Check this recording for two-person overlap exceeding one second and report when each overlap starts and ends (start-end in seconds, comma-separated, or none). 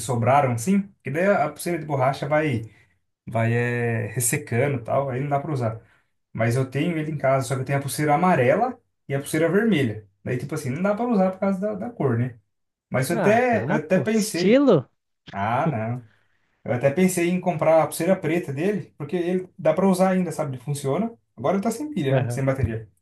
13.1-14.6